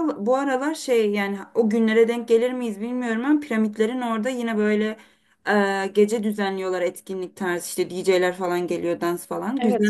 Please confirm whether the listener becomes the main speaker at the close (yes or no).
yes